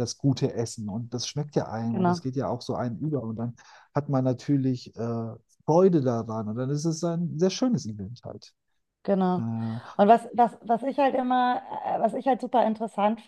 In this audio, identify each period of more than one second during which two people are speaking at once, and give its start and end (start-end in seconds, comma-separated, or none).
none